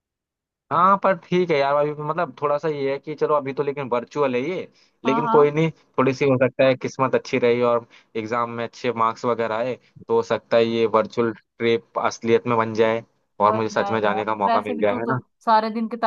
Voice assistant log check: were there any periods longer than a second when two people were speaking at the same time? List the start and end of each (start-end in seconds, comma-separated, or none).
13.5-15.2